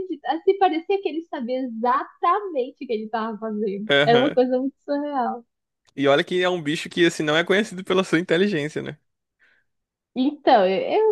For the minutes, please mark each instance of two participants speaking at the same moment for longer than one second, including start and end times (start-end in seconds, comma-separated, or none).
none